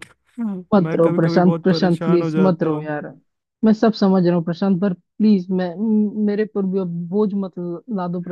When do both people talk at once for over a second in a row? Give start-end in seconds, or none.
0.7-2.9